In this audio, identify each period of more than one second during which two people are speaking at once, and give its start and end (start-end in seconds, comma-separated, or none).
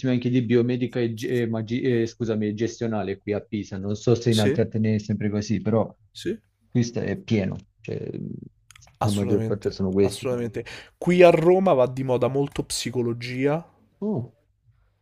9.0-10.3